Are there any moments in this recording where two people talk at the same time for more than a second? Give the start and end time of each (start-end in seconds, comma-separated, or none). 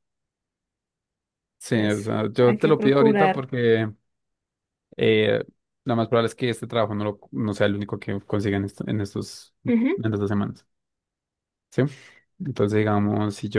1.7-3.4